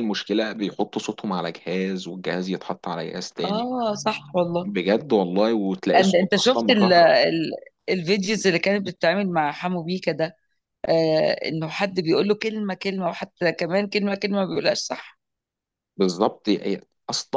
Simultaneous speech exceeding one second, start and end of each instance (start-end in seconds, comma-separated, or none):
6.0-7.2